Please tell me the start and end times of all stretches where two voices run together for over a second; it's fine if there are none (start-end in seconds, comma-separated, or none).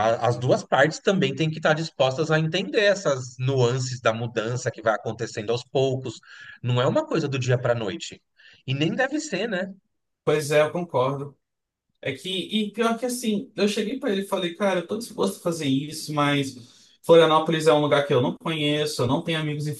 none